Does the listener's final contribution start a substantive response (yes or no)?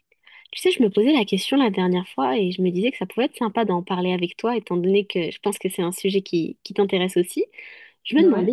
no